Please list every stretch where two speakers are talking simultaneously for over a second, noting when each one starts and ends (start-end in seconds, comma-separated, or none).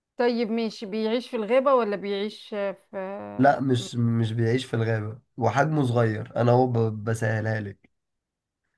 none